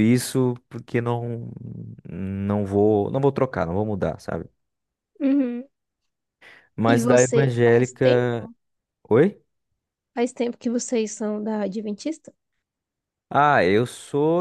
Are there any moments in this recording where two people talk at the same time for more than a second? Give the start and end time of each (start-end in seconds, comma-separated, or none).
6.8-8.5